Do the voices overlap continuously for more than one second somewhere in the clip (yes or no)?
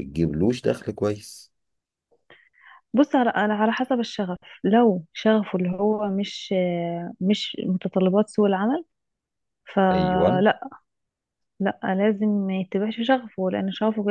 no